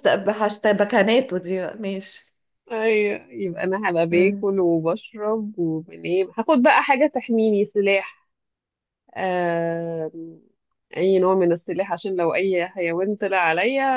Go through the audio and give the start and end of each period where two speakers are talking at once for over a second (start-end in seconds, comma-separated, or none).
none